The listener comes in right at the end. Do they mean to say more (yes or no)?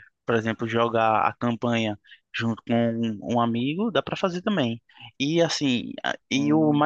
no